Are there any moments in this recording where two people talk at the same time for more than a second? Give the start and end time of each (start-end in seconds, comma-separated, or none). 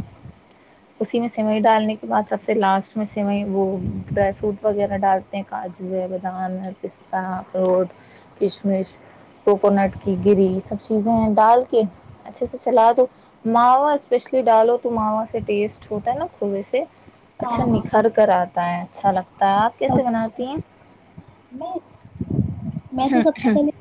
none